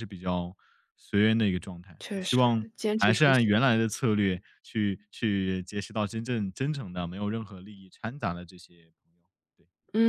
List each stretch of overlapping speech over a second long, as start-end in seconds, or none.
2.0-3.6